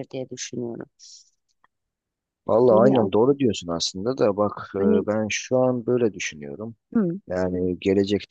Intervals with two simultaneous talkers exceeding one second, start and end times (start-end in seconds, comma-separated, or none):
none